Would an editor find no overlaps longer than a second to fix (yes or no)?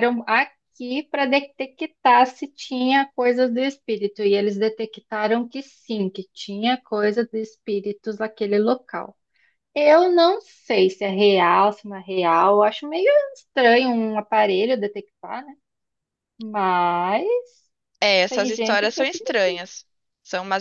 no